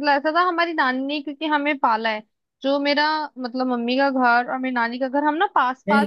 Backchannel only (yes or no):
no